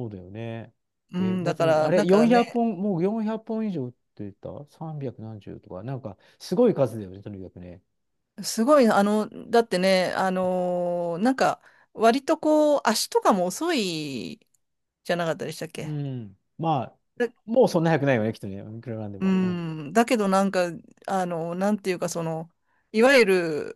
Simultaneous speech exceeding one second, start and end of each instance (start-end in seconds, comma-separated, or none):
1.2-2.6